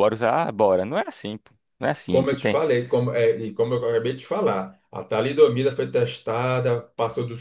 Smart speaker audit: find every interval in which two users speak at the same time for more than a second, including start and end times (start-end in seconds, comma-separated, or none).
none